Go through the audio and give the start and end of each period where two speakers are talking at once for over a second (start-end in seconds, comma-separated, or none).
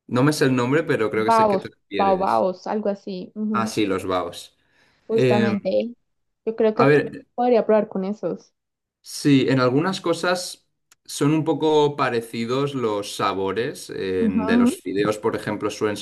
1.1-2.5